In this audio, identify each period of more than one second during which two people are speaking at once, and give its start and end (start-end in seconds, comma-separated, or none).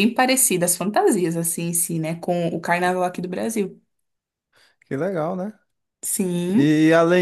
none